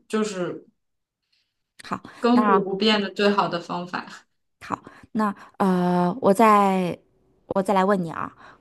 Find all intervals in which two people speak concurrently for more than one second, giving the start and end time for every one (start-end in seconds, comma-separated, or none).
none